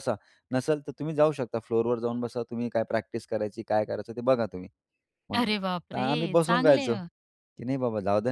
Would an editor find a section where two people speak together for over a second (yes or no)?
yes